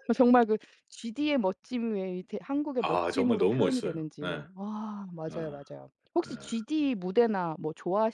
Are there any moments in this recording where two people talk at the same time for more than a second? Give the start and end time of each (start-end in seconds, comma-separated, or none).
2.8-4.5